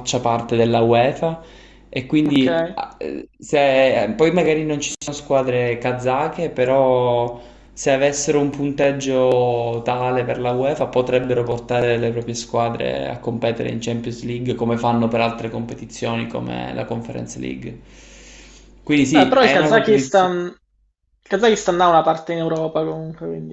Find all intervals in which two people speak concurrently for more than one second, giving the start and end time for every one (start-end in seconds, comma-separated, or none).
19.1-20.3